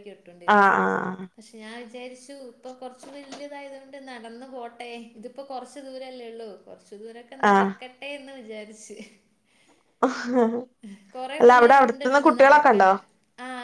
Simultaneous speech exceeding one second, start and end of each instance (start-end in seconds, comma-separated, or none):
11.4-12.9